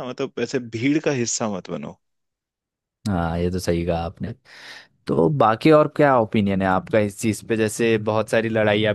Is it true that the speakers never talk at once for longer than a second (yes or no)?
yes